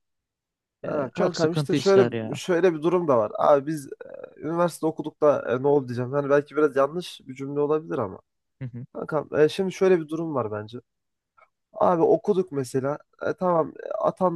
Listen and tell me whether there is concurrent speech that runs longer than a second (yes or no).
yes